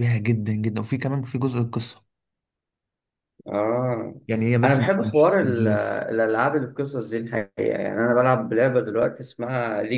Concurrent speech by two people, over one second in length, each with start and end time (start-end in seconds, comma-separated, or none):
4.6-6.0